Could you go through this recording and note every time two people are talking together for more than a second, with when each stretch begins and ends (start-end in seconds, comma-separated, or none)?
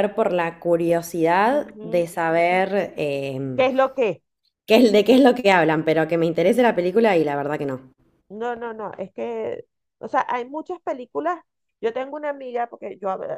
none